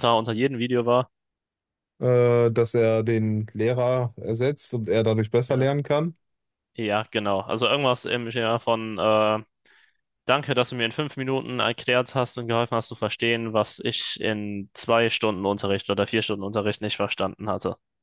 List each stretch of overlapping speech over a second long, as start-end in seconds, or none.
none